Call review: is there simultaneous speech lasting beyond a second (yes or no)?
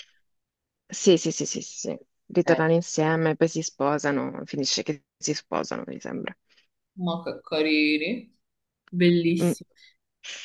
no